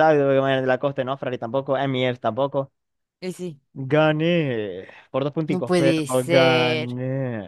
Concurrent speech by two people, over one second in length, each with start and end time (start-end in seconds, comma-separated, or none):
5.5-7.0